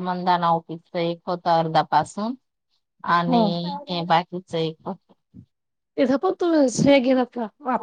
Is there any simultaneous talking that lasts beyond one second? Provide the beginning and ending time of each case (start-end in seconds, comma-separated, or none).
none